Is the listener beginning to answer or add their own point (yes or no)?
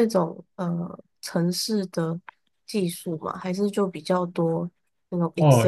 yes